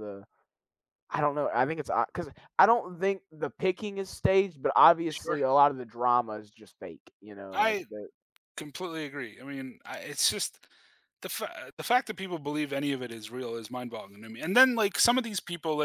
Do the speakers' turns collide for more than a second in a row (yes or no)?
no